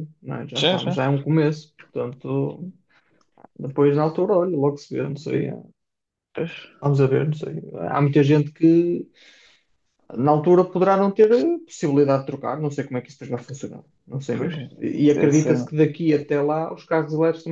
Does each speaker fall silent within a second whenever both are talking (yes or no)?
no